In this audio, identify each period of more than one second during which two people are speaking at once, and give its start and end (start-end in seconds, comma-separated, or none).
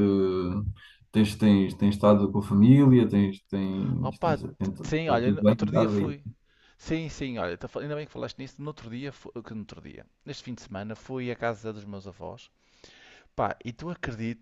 4.0-6.1